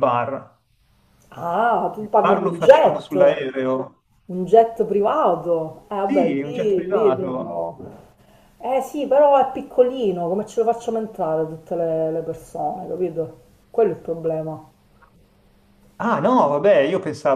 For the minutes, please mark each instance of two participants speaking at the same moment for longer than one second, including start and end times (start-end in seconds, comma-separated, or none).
2.0-3.4, 6.1-7.7